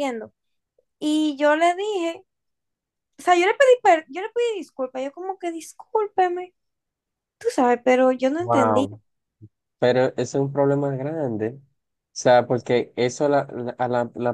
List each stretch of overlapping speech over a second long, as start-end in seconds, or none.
none